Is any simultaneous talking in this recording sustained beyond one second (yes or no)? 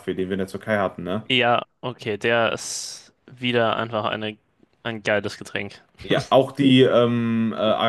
no